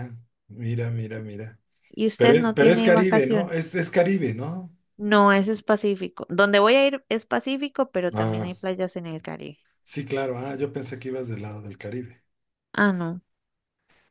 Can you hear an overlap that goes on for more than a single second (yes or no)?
yes